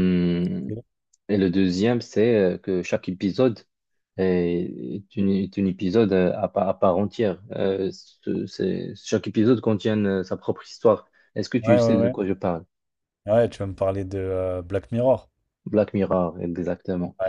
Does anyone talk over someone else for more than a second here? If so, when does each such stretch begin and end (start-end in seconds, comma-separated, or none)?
none